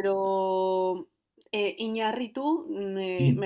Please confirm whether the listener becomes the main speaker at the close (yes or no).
no